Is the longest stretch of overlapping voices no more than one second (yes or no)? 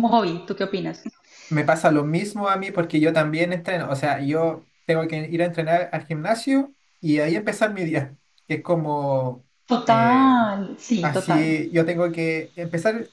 yes